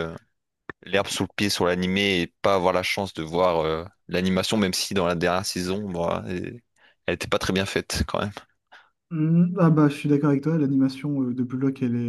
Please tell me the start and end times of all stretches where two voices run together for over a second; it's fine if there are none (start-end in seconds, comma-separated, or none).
none